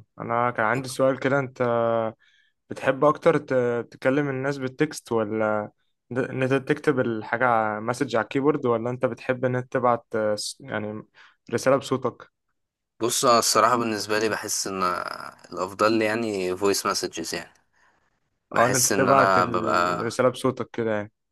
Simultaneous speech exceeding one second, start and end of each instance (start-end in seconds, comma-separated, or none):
18.5-20.0